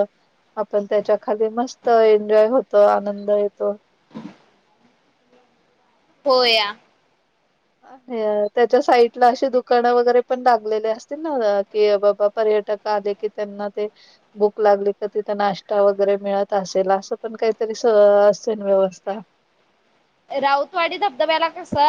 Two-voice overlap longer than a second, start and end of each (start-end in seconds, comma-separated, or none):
none